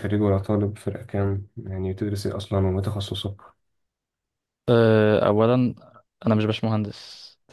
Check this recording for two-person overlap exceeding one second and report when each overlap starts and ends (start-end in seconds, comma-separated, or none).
none